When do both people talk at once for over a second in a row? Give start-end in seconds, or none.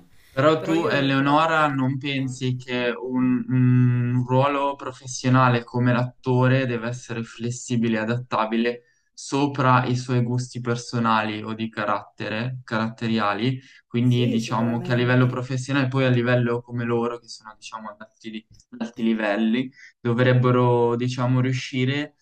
0.6-2.0, 14.0-15.4